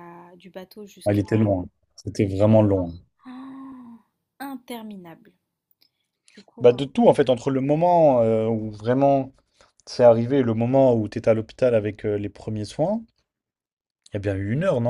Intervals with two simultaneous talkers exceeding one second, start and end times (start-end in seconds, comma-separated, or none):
none